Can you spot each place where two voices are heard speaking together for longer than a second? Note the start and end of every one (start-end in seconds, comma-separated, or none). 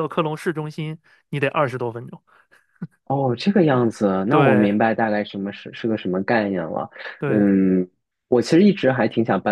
none